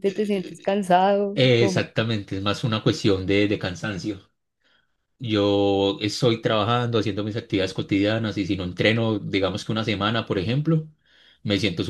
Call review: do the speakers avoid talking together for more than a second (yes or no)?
yes